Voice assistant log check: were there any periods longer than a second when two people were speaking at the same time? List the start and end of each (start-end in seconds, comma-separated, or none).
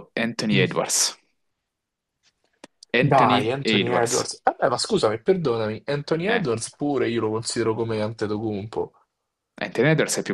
3.0-4.3